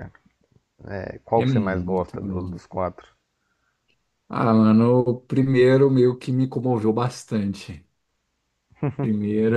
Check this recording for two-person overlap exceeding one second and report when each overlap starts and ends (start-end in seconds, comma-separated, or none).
1.4-2.6